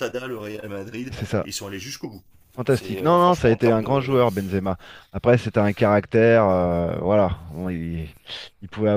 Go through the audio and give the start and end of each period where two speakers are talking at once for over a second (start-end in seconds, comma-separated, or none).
2.7-4.2